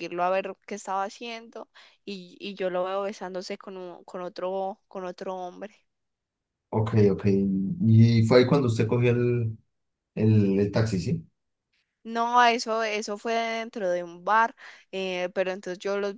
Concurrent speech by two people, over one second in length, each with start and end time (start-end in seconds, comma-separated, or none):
none